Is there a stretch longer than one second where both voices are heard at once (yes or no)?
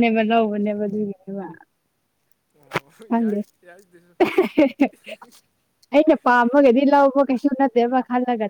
no